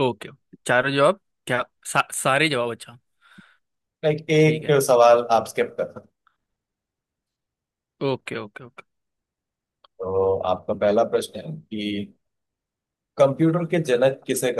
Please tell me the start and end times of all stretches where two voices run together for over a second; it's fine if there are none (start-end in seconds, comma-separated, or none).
none